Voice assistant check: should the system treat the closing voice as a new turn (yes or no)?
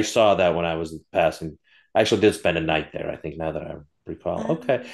no